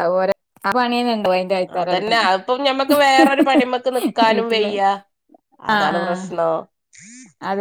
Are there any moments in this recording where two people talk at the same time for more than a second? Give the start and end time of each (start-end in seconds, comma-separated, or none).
none